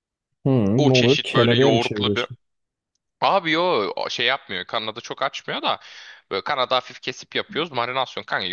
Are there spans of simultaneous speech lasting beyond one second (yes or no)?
yes